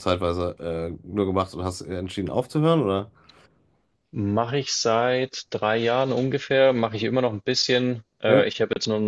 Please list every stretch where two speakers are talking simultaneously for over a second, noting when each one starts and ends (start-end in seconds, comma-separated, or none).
none